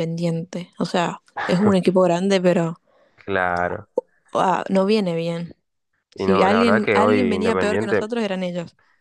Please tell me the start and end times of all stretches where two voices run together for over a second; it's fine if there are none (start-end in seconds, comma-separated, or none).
6.2-8.1